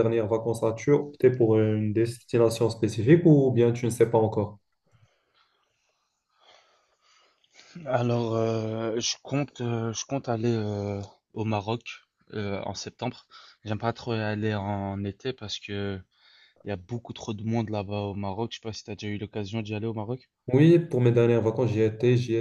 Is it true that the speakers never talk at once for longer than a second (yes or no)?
yes